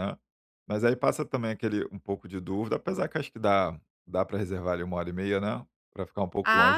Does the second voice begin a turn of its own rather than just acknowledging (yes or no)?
yes